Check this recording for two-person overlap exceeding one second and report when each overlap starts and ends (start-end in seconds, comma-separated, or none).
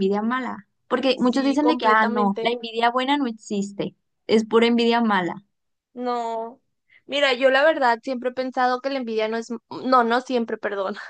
1.1-2.5